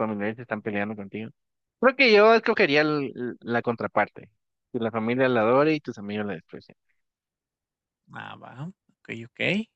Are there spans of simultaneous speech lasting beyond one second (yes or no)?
no